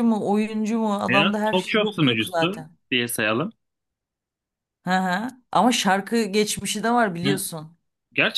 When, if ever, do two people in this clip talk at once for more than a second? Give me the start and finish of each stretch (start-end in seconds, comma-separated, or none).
1.1-2.5